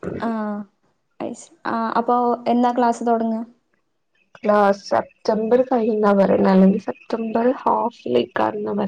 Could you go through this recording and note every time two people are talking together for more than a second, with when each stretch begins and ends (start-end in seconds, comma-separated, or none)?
none